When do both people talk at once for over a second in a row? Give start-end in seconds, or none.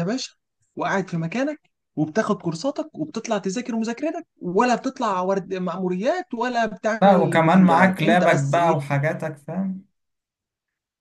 7.0-8.8